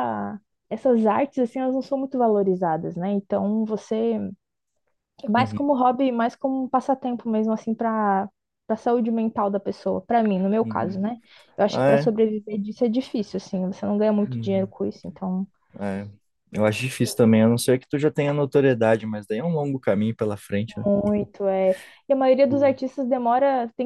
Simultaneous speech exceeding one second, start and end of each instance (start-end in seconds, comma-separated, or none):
none